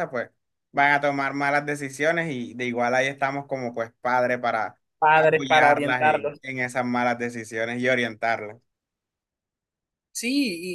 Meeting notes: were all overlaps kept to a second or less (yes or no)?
no